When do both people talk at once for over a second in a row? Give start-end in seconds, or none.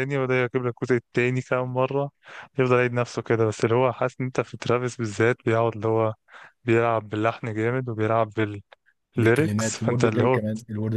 9.2-10.4